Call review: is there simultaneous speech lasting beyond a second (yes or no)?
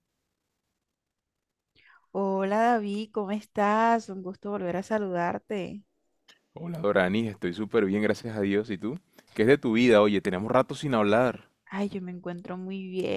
no